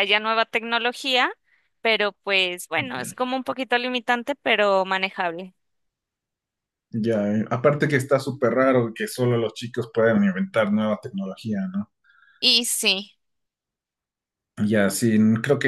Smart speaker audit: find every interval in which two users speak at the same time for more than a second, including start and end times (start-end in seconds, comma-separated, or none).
none